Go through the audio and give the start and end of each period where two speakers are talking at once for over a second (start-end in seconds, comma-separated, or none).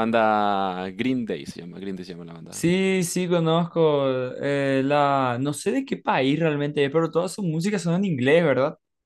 none